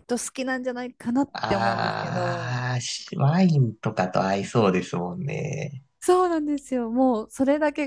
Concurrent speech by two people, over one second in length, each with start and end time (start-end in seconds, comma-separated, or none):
1.3-2.6